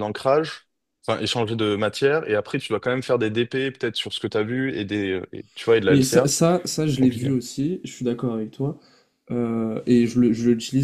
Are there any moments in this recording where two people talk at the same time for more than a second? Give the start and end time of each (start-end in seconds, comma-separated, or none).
none